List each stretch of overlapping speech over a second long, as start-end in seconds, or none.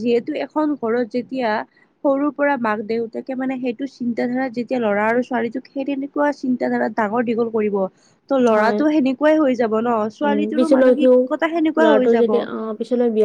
none